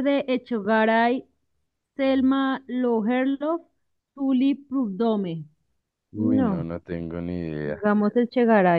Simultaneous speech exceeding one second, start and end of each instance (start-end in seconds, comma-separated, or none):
none